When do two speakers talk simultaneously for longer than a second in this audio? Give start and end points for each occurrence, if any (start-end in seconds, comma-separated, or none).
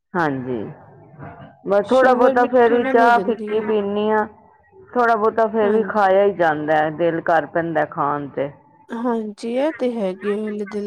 1.9-3.7